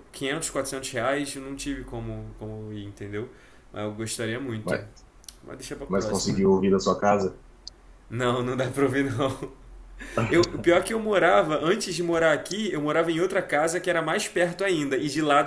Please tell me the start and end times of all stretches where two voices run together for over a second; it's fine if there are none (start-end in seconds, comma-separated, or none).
none